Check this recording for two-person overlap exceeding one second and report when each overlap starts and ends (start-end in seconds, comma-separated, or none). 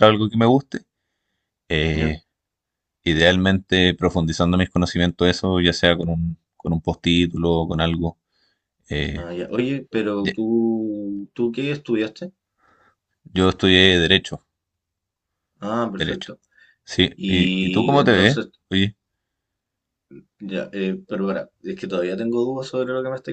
17.1-18.5